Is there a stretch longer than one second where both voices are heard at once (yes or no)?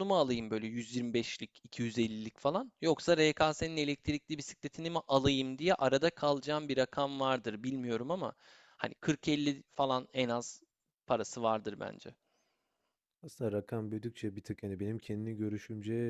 no